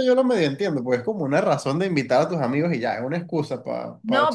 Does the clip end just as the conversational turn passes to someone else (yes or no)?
yes